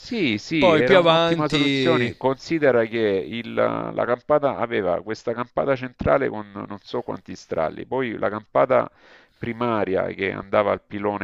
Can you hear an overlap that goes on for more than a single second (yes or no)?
yes